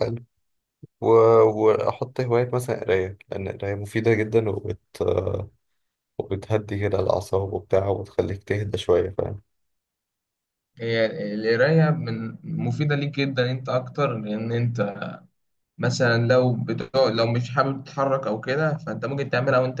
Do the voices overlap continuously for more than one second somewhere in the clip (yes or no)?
no